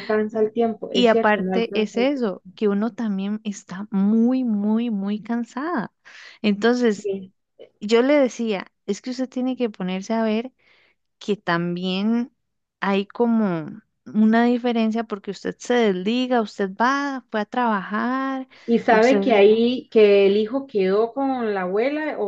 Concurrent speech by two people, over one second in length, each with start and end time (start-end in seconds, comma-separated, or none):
0.9-2.3